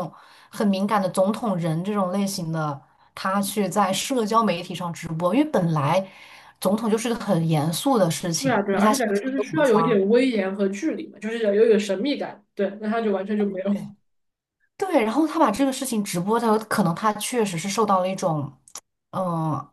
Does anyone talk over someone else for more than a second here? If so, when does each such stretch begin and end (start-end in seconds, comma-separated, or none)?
8.4-10.0